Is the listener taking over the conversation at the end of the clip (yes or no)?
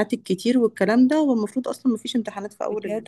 yes